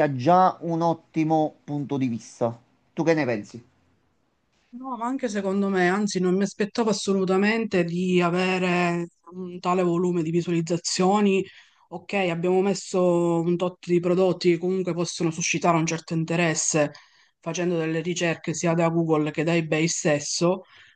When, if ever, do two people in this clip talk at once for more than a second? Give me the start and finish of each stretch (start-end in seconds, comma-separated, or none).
none